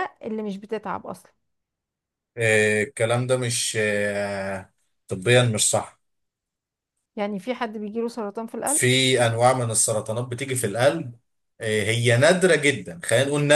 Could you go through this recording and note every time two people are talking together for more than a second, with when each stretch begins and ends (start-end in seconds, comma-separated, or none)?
none